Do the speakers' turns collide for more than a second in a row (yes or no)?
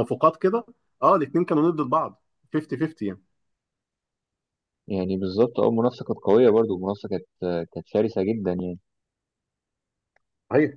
no